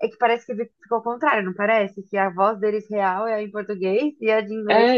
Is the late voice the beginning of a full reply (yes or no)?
yes